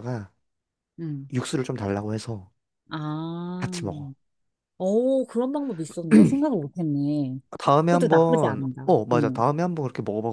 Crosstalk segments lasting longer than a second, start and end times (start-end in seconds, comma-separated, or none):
7.8-9.4